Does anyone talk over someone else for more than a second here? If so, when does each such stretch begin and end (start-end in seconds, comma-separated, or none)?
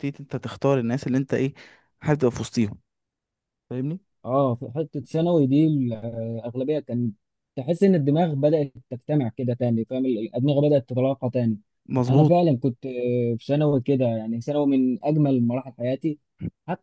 none